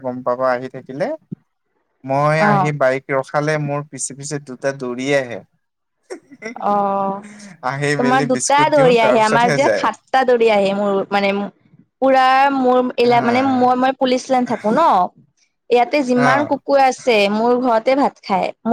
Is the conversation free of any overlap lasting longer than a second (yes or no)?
no